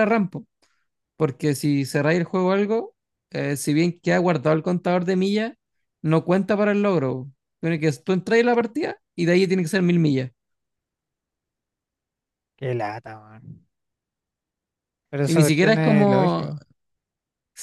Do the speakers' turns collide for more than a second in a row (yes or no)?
yes